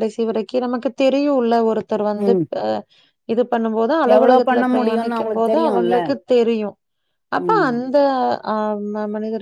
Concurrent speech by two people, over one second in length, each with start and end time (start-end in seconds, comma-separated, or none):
4.2-6.0